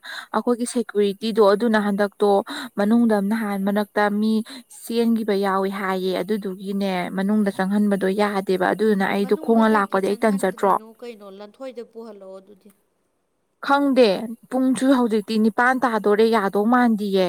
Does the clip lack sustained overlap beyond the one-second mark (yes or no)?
no